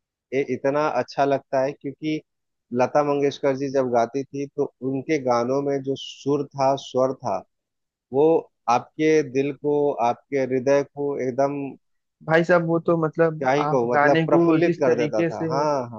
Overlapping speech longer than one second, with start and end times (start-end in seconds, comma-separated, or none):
13.4-15.5